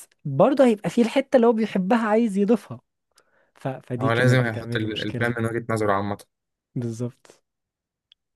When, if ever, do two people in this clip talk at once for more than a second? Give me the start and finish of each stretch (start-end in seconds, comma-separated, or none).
4.0-5.4